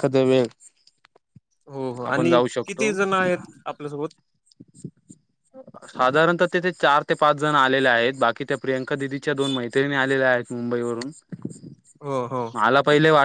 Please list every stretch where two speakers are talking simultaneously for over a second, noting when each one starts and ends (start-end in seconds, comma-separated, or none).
none